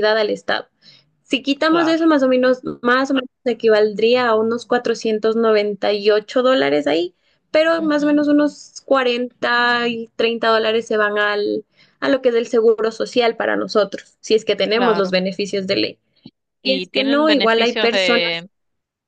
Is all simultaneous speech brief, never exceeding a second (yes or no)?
no